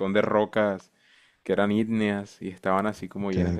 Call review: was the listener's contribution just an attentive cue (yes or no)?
no